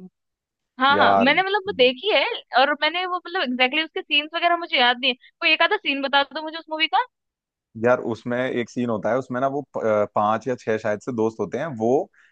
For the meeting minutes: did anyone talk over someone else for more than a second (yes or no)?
no